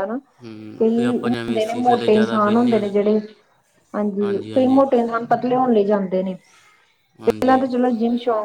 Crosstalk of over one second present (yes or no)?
yes